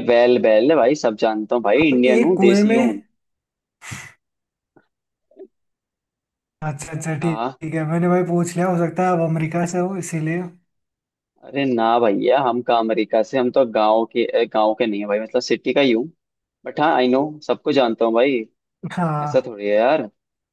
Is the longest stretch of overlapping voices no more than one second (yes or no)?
no